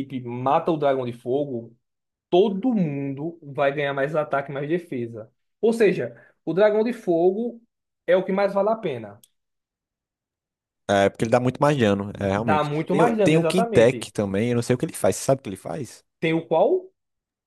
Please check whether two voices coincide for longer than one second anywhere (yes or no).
yes